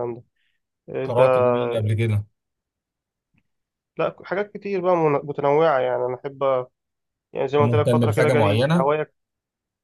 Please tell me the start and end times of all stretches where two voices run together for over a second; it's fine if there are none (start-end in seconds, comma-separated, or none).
7.6-8.9